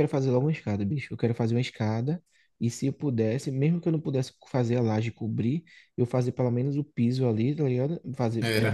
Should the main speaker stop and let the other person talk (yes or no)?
no